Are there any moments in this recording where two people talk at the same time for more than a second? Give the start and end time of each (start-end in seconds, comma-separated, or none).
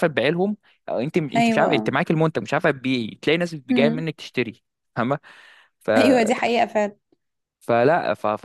none